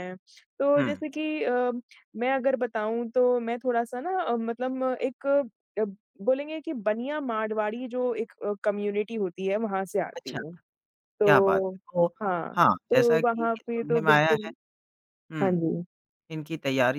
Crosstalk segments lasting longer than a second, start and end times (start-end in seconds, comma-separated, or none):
12.6-14.5